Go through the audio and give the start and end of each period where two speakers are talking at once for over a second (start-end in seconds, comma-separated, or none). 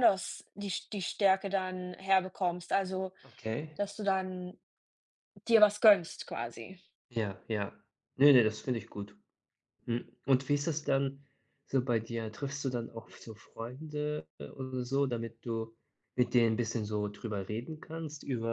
none